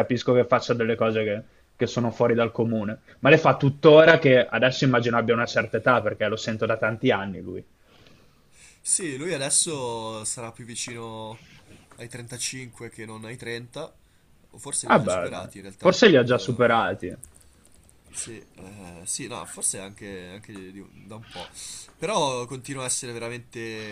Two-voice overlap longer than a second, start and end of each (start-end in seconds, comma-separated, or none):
14.8-16.6